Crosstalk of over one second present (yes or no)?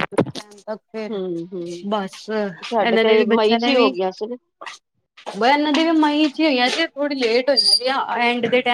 yes